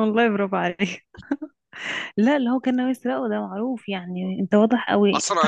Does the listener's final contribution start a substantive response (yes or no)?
yes